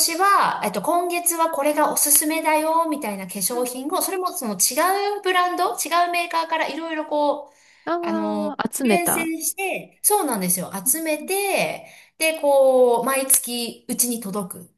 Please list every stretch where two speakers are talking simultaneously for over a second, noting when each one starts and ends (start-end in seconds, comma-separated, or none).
8.0-9.3